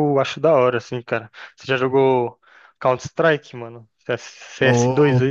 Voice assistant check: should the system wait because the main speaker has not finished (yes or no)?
no